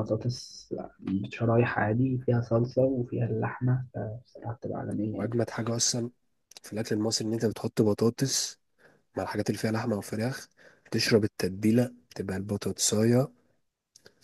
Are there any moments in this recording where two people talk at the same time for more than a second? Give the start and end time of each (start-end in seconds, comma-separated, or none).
none